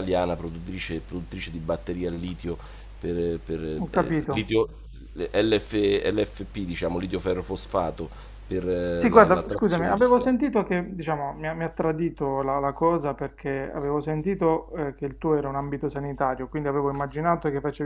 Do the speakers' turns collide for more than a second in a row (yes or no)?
yes